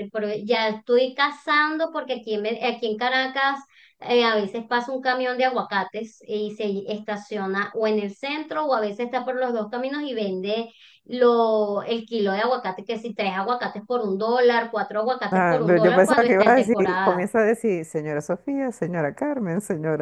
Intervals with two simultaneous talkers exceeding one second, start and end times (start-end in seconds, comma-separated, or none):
15.3-17.3